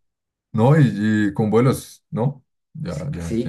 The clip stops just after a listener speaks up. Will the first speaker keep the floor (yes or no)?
no